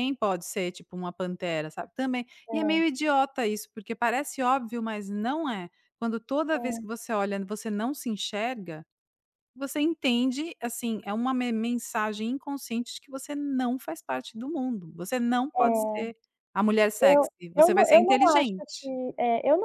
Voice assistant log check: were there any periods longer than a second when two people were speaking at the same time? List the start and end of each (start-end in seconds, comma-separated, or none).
17.0-18.9